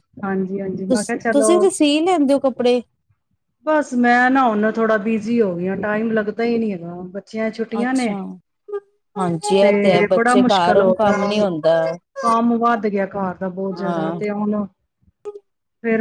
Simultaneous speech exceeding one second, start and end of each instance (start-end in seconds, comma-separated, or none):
9.6-11.6